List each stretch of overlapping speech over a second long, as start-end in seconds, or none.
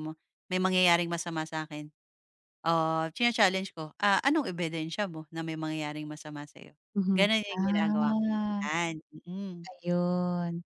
7.1-8.6